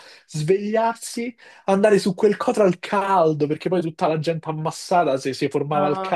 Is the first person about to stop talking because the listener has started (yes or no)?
yes